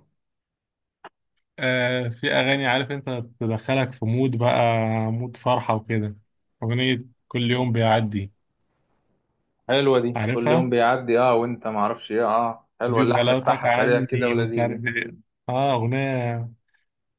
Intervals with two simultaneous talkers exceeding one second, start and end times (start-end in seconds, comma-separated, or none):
12.9-14.8